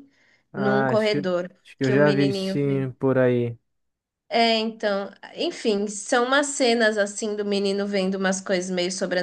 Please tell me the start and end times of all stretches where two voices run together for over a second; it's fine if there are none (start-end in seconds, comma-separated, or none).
0.5-2.8